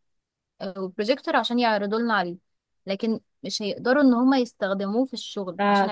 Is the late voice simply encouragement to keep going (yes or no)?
no